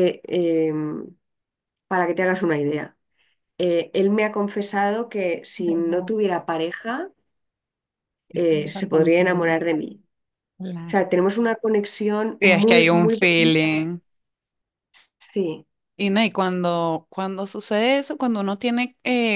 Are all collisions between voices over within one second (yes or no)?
no